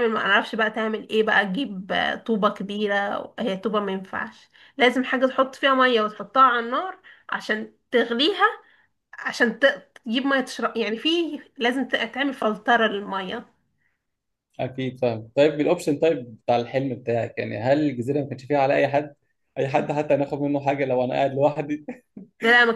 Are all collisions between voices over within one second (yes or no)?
yes